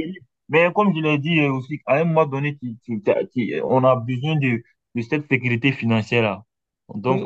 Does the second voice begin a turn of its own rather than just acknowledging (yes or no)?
yes